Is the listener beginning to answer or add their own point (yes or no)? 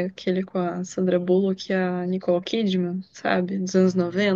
yes